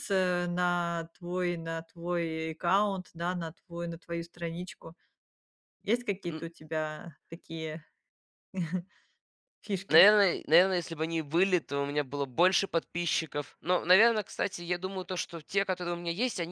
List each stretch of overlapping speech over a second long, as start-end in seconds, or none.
none